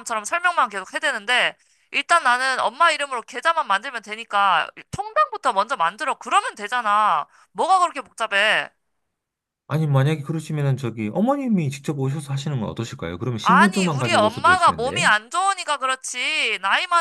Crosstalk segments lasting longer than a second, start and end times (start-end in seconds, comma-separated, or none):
13.4-15.1